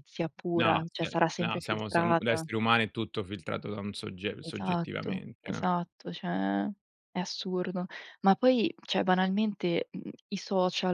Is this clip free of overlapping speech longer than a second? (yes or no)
no